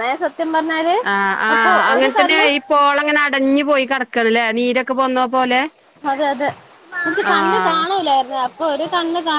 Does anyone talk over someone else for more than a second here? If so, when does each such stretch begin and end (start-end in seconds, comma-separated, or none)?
none